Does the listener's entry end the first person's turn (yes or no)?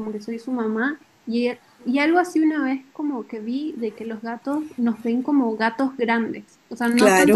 no